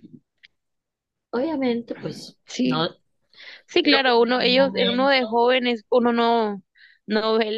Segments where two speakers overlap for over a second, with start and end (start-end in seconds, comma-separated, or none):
3.8-5.2